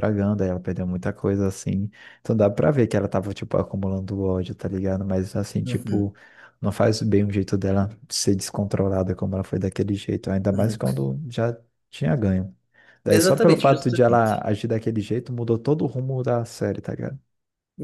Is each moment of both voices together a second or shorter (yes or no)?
no